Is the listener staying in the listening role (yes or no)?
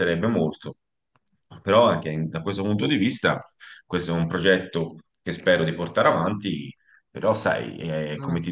yes